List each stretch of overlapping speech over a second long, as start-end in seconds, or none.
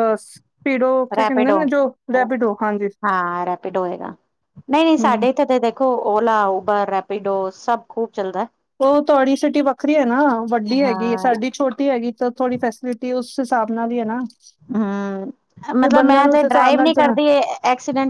15.8-17.2